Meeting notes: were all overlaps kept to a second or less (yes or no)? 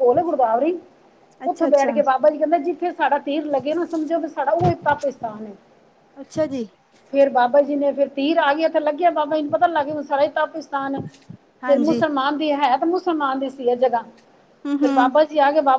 yes